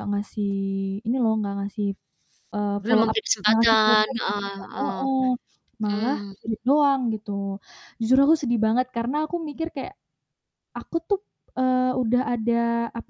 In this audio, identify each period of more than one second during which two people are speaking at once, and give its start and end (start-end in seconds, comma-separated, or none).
2.8-5.0